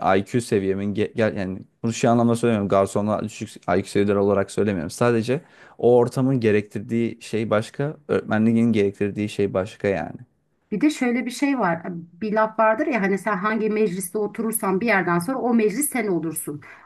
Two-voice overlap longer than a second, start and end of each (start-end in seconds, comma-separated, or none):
none